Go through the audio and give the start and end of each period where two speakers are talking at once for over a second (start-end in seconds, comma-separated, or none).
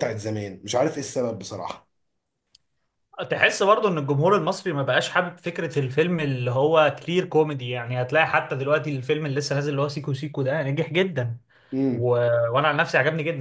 none